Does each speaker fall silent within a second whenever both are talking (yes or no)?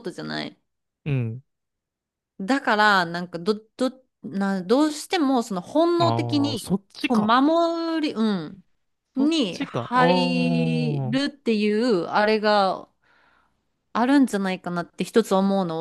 no